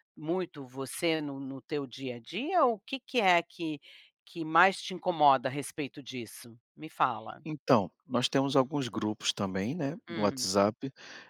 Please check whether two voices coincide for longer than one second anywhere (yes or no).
no